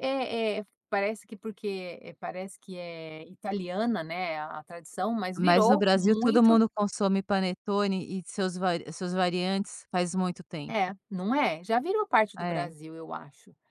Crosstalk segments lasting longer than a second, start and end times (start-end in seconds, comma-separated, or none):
5.4-6.6